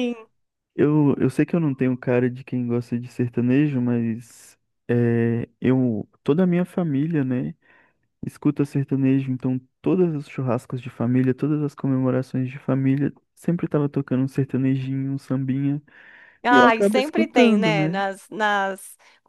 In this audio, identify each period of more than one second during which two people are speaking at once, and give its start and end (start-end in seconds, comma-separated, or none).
16.5-18.0